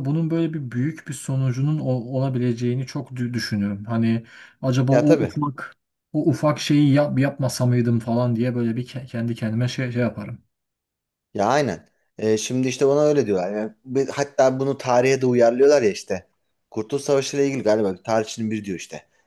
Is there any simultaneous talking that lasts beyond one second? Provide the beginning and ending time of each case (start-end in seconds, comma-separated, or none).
none